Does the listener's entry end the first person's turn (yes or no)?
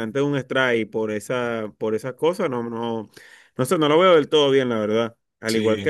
no